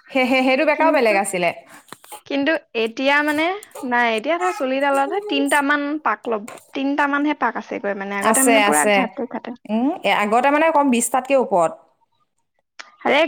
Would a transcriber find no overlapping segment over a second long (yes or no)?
yes